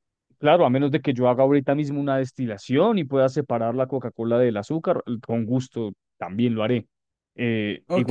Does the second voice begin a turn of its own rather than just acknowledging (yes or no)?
yes